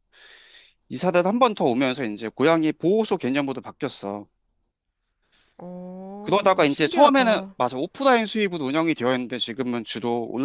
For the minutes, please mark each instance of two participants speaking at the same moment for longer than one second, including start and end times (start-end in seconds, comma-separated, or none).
6.2-7.5